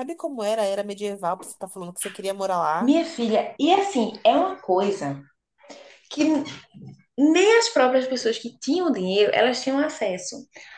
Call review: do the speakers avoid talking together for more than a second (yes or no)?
yes